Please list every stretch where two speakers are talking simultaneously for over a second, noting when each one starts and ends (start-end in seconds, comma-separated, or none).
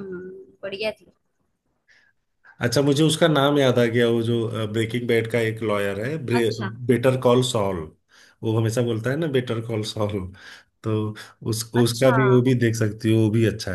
none